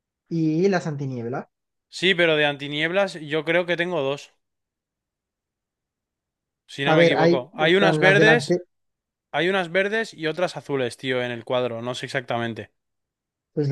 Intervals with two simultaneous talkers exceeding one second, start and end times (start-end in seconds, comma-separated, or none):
6.8-8.6